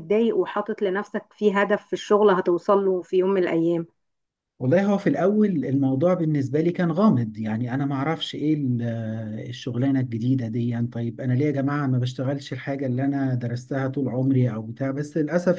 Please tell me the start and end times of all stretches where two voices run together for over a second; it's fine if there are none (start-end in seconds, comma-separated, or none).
none